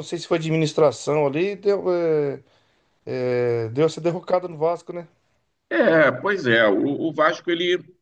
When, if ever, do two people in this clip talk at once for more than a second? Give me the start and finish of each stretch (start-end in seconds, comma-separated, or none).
none